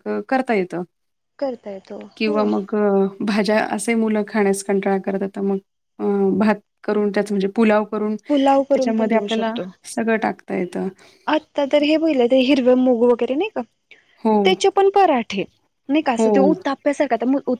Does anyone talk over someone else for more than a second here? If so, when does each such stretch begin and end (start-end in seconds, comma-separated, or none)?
8.3-9.5